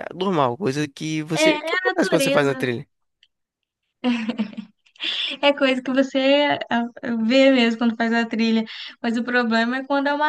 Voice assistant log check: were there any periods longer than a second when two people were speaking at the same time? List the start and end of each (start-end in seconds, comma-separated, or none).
1.4-2.7